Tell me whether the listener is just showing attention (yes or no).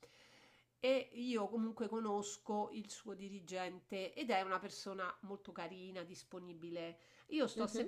yes